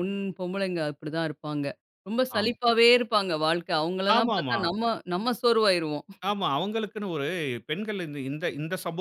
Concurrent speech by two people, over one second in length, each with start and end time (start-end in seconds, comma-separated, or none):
none